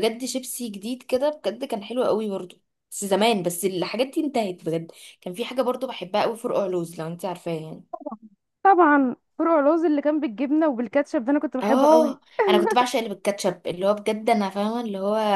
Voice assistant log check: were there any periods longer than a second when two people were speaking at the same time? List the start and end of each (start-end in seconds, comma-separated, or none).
none